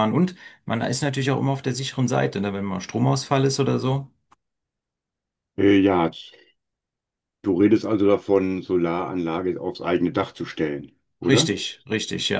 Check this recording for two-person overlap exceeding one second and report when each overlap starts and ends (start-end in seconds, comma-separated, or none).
none